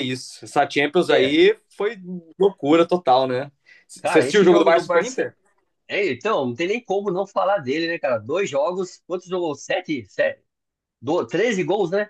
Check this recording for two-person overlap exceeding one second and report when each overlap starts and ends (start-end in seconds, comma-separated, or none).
4.0-5.3